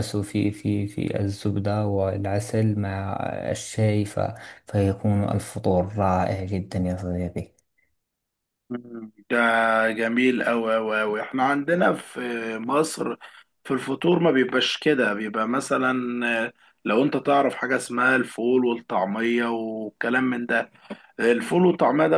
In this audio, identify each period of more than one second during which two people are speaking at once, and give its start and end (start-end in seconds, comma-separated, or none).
none